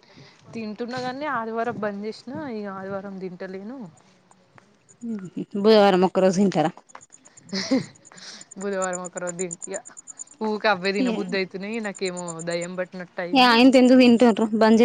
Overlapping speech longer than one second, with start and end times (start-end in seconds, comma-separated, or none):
none